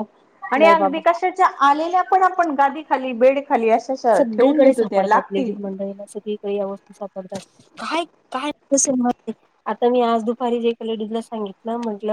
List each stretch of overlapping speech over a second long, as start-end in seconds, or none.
4.2-5.5